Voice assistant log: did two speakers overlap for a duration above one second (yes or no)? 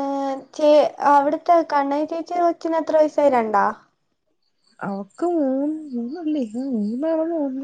no